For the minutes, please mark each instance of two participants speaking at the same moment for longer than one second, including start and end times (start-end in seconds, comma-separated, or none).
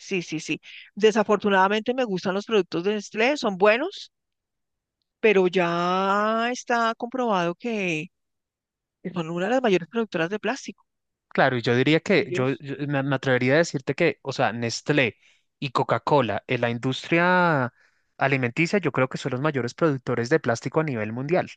none